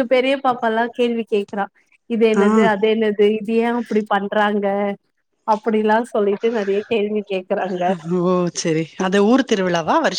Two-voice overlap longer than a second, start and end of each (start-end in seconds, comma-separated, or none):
none